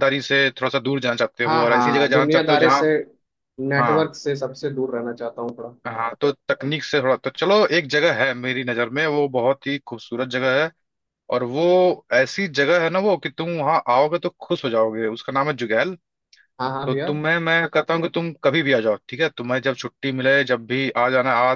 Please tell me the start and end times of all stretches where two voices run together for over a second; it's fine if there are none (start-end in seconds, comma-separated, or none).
1.4-2.9